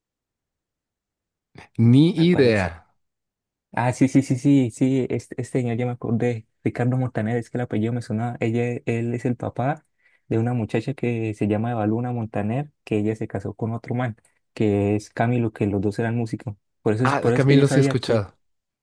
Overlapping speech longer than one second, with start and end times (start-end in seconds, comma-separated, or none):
17.0-18.3